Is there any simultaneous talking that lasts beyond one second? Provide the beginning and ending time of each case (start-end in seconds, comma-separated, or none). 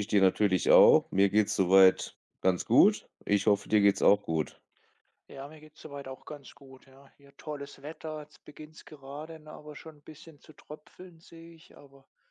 none